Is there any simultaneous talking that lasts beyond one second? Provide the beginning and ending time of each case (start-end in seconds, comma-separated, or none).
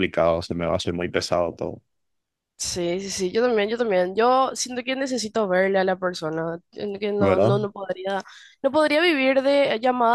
none